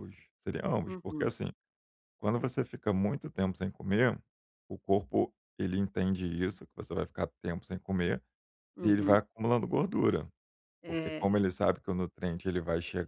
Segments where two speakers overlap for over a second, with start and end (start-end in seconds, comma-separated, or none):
none